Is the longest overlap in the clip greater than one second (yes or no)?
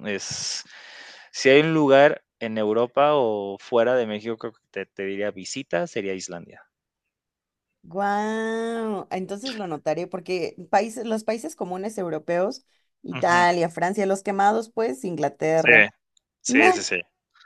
no